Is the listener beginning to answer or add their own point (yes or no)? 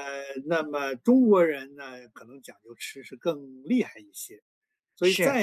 no